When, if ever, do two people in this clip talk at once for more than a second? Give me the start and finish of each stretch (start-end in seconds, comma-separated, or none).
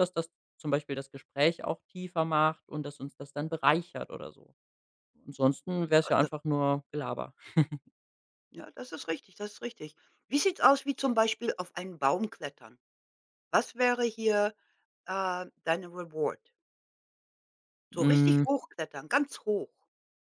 none